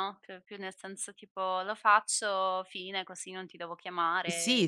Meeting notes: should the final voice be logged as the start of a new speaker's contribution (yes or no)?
yes